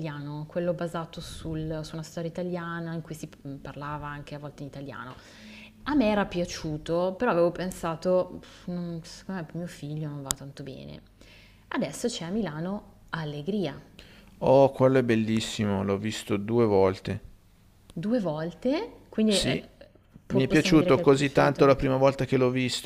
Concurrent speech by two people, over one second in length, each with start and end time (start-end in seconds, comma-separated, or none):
20.3-21.7